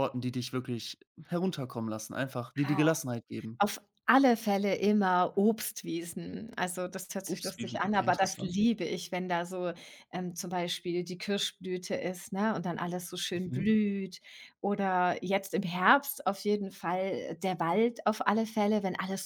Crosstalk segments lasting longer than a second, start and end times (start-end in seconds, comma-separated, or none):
7.3-8.6